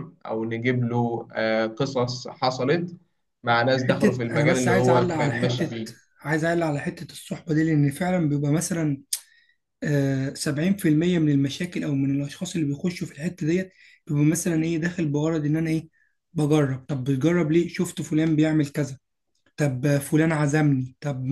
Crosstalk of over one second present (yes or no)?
yes